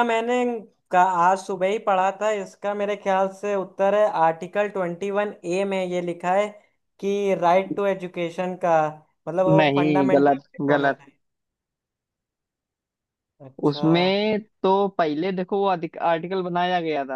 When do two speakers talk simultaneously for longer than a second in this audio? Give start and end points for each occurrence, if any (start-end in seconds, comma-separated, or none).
9.6-11.0